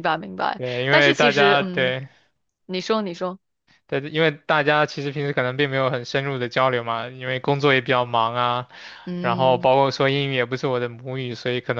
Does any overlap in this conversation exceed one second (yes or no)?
yes